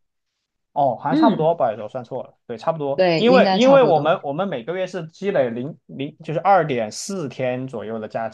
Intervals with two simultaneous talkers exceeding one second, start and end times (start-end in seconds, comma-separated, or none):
2.9-4.2